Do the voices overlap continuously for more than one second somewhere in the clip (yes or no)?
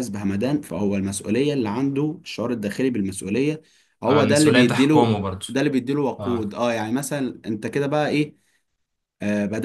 yes